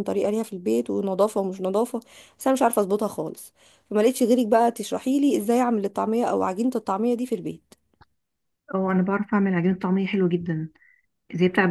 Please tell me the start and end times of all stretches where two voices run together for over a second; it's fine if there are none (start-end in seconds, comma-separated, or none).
none